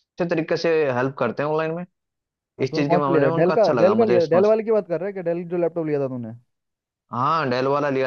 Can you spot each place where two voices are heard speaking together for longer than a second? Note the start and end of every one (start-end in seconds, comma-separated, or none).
2.6-4.5